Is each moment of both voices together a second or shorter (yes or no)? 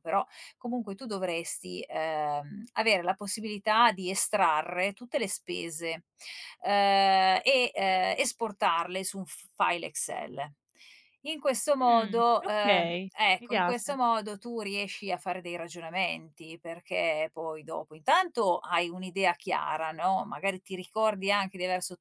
no